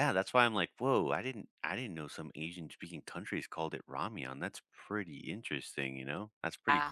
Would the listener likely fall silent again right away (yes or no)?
no